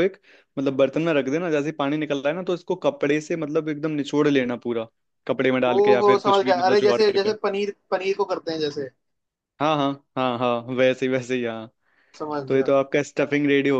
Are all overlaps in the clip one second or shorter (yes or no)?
no